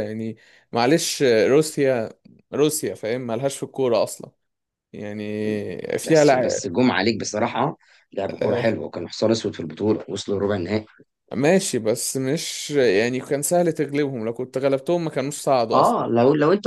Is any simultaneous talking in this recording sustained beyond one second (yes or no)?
no